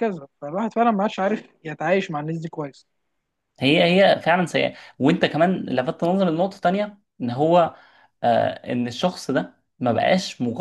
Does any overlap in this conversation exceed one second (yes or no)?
no